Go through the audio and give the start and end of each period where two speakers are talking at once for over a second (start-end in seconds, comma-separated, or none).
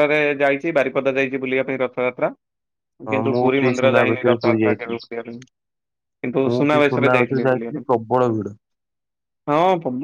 3.1-5.0